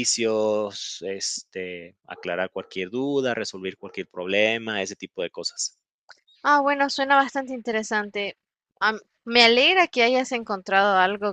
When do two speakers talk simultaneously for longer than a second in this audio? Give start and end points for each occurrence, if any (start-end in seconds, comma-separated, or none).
none